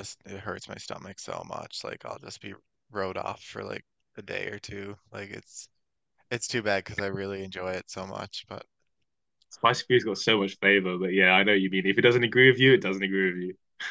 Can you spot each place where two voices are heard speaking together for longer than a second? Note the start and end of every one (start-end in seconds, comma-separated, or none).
none